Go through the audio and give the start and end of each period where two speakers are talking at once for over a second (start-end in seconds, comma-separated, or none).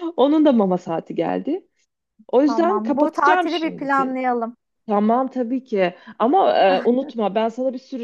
2.4-4.2